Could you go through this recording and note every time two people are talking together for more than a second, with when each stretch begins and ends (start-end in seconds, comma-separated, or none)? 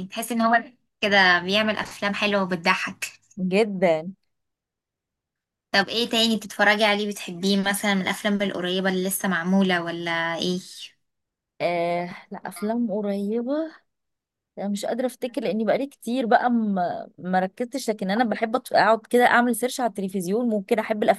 none